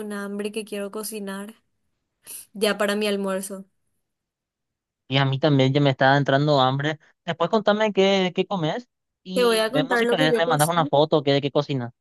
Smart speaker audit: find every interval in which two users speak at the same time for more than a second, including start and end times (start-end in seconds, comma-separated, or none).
9.3-10.9